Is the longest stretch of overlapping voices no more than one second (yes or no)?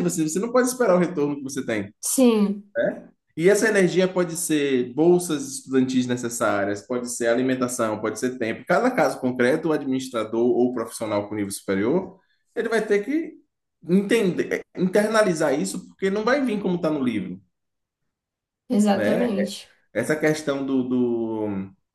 yes